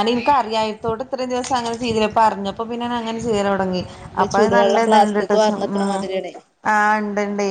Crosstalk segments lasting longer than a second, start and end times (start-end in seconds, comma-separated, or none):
4.2-5.8